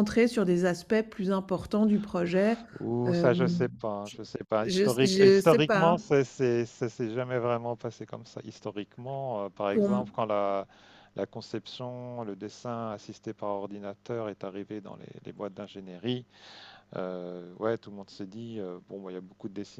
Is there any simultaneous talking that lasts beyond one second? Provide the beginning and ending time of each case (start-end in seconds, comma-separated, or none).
4.6-6.0